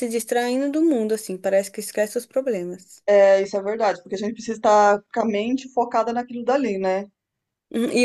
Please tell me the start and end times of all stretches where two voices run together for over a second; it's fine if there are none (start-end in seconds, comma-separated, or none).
none